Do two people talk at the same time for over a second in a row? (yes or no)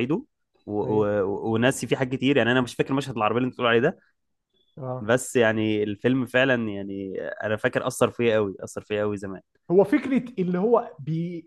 no